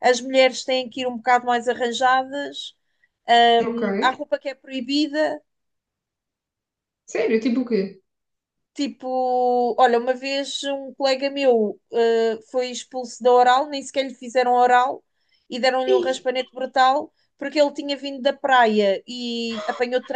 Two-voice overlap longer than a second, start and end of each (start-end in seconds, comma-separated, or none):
none